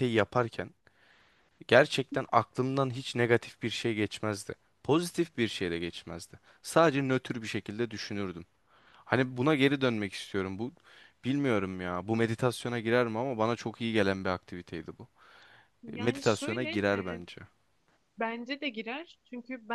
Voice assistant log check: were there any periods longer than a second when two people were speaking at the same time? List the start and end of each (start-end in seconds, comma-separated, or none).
15.9-17.2